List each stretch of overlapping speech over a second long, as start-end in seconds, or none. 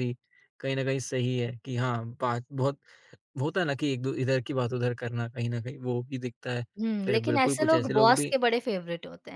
7.1-8.3